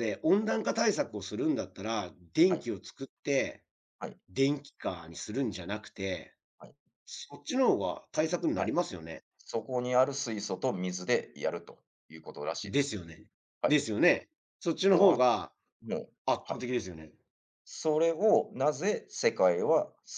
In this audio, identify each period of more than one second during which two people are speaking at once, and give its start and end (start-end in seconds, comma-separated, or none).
none